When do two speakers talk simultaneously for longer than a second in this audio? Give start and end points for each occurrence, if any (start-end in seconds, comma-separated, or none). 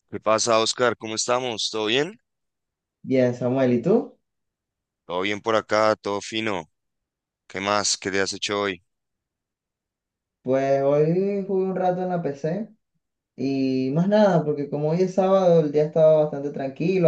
none